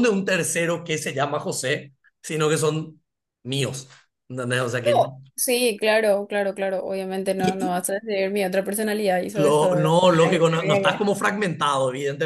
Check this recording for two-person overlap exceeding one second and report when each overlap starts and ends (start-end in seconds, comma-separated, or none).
9.4-11.1